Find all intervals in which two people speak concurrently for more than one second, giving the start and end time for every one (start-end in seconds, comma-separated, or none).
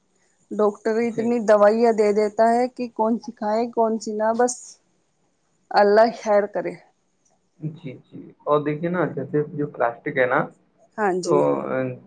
none